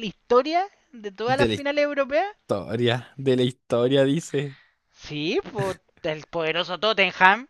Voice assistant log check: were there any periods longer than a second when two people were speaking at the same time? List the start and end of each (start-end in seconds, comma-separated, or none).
none